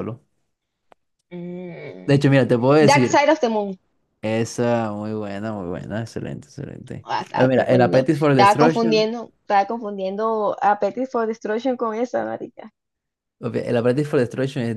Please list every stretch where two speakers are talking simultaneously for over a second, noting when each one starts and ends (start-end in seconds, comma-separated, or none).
7.0-9.1